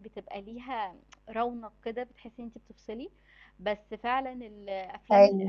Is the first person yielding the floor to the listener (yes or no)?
no